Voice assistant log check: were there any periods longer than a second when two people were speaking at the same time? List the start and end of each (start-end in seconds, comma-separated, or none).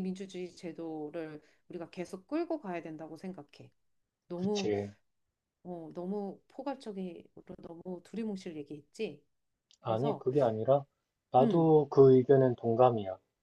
none